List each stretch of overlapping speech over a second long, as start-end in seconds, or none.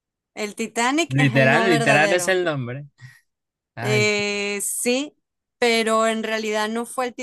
1.1-2.4